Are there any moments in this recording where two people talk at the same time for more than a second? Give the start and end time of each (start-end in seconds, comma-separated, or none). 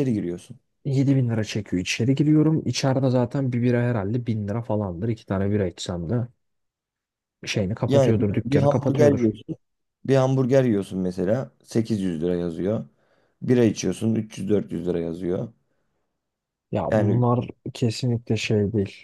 7.9-9.3